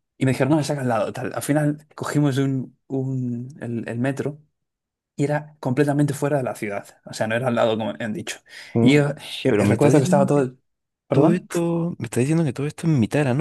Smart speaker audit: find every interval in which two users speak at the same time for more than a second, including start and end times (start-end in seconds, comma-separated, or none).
8.8-10.4